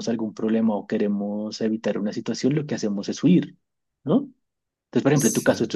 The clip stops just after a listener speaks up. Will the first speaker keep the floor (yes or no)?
yes